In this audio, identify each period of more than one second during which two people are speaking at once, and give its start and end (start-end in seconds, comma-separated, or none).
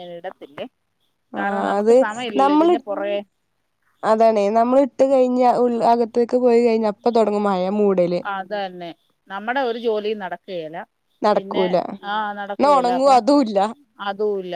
none